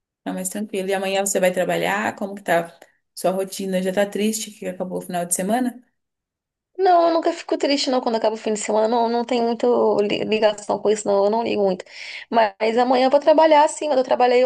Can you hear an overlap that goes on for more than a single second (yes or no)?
no